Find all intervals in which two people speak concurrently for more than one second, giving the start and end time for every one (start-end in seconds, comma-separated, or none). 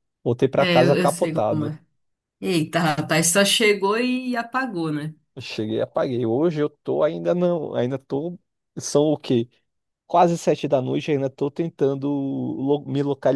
0.6-1.8